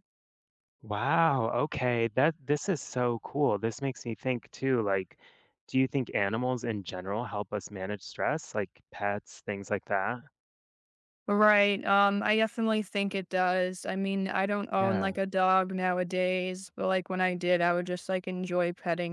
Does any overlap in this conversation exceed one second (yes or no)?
no